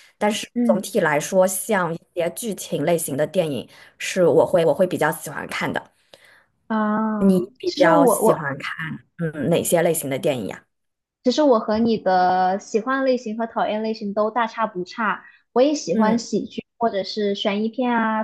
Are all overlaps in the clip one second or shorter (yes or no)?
no